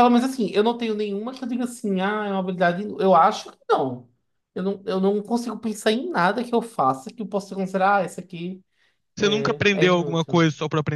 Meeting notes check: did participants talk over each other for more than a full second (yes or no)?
yes